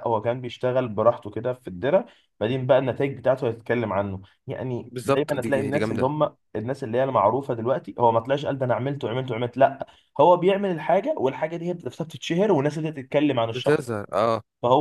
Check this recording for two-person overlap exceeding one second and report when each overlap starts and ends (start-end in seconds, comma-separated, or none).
4.9-6.1